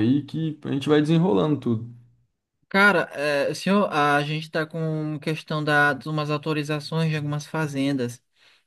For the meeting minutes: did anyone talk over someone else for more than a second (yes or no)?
no